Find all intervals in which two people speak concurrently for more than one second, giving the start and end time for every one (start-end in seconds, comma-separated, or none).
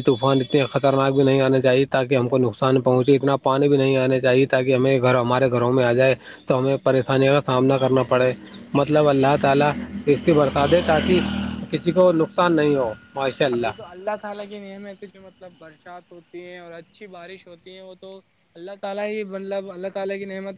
none